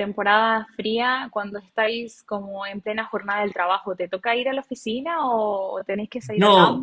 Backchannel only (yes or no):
no